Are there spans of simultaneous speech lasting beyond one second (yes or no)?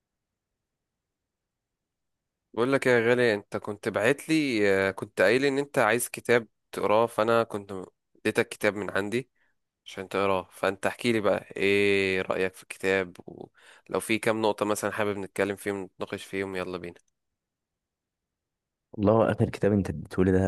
no